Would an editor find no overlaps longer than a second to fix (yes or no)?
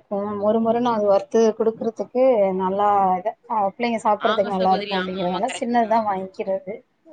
no